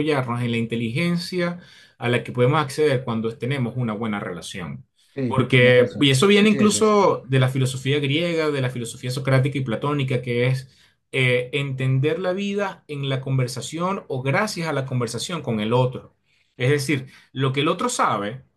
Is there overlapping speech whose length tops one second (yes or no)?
yes